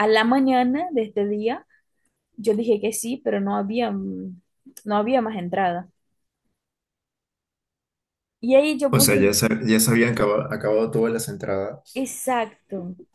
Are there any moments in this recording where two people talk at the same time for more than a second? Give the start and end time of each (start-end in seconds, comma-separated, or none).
none